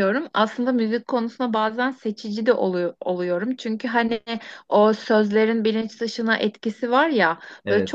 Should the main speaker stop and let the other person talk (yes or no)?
no